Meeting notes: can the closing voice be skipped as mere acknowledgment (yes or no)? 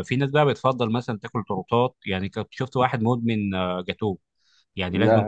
yes